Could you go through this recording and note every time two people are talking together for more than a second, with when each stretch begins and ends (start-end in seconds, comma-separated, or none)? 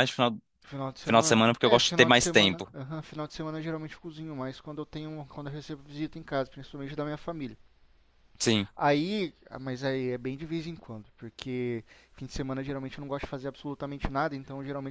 1.0-2.7